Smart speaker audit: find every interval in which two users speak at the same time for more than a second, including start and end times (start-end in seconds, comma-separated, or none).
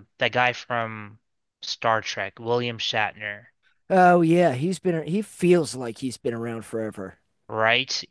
none